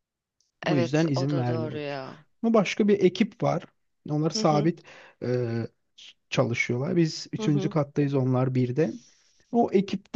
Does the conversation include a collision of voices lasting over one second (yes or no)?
yes